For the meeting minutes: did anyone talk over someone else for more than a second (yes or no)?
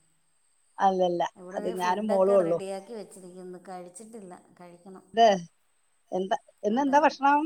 no